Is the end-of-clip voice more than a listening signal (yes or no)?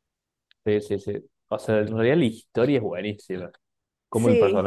no